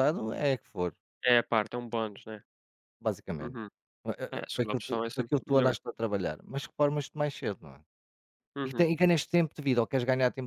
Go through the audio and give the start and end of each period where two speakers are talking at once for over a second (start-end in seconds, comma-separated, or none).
4.3-5.7